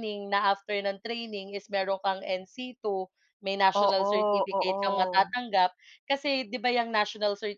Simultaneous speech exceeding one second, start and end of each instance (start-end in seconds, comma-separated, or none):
3.7-5.3